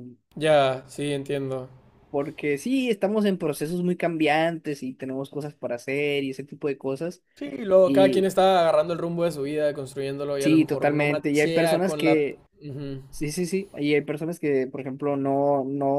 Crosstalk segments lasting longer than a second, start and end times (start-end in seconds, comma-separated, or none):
10.4-12.4